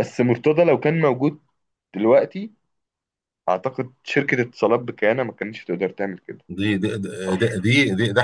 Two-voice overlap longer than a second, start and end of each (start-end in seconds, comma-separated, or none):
none